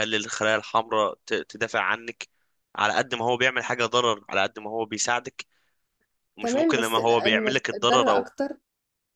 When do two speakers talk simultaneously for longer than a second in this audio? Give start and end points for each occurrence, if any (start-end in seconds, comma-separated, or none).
6.4-8.3